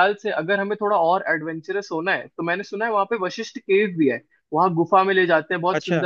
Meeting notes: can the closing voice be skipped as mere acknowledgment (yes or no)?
yes